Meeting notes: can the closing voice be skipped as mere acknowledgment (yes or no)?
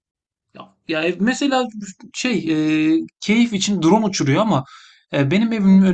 yes